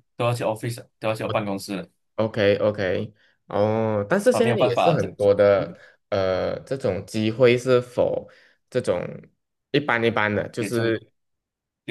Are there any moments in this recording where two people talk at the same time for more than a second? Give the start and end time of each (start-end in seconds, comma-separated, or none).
4.3-5.8